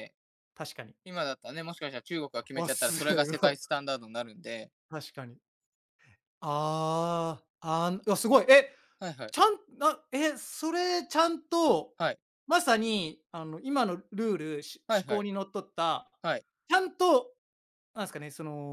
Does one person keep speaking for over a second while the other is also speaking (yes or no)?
yes